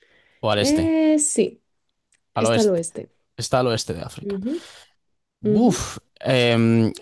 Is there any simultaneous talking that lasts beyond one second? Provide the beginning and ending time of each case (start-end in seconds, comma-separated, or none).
none